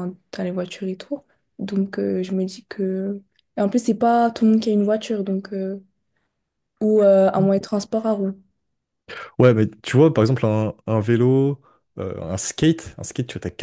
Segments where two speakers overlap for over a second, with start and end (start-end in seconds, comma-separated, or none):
none